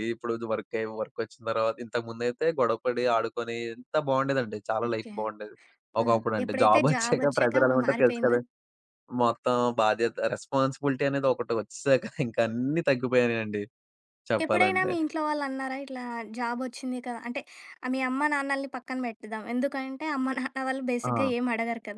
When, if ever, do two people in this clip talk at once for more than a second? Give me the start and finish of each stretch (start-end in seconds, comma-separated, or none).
6.0-8.4